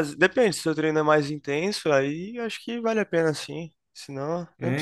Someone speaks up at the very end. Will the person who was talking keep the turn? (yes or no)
no